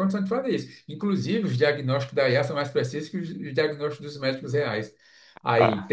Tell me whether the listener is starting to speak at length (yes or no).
no